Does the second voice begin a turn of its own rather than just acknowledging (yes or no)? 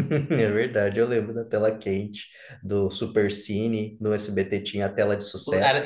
yes